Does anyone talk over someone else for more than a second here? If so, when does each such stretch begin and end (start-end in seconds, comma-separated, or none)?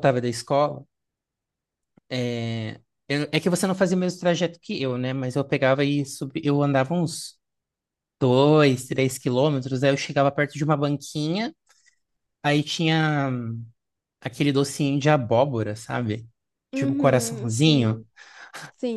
16.7-18.0